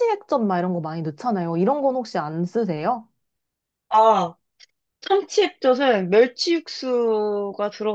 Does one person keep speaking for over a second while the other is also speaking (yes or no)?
no